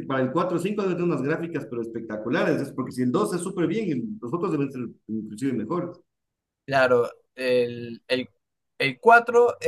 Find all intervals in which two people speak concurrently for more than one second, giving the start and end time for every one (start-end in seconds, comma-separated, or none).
none